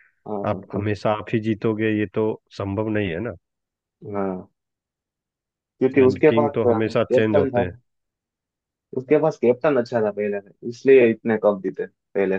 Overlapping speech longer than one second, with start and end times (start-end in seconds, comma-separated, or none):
6.0-7.6